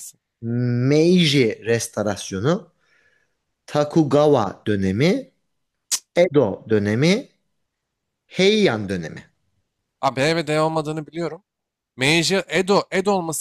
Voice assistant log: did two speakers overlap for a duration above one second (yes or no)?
no